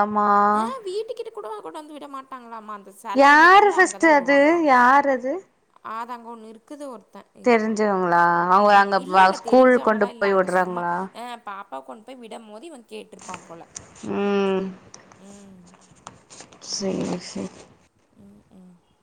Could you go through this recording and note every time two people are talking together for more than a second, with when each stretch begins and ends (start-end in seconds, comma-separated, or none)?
8.7-10.8